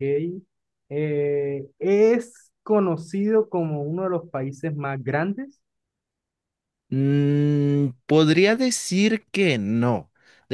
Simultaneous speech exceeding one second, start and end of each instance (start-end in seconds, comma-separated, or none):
none